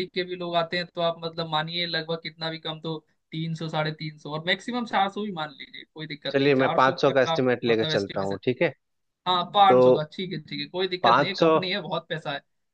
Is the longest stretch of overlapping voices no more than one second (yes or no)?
no